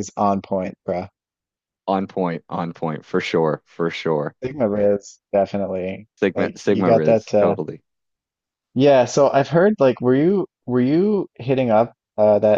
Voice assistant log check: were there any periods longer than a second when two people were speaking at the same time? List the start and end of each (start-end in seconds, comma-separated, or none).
6.2-7.6